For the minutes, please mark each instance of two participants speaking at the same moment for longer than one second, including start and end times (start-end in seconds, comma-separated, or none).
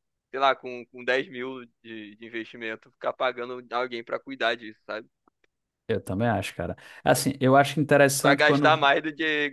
none